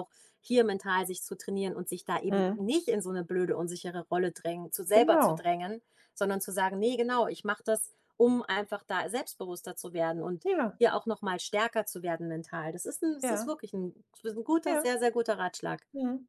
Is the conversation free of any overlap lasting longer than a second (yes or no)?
yes